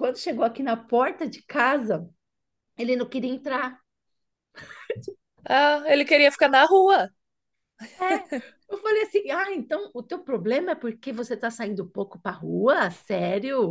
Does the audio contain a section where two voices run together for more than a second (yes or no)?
no